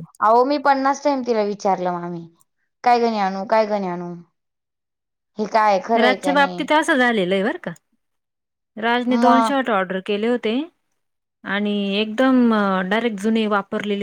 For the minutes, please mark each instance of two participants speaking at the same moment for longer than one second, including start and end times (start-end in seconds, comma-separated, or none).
none